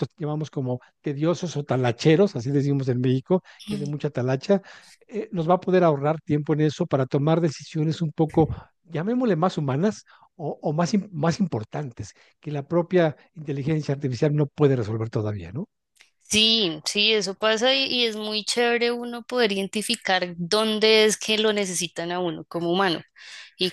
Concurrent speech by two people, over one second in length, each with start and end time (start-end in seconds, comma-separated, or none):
none